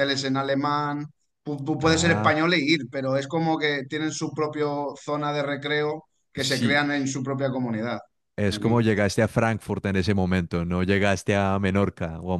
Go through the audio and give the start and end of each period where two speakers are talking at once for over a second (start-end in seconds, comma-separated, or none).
none